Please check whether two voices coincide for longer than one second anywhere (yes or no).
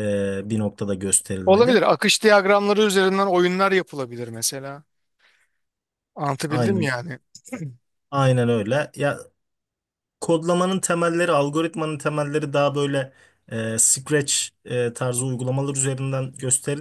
no